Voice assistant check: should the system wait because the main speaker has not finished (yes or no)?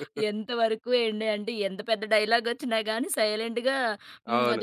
yes